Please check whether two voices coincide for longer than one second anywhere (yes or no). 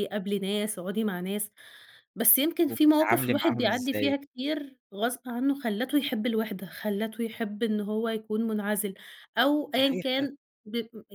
yes